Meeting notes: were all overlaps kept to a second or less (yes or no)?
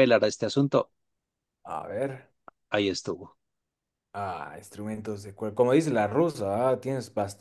yes